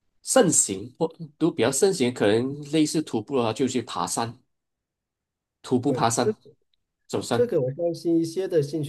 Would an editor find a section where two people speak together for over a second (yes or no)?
no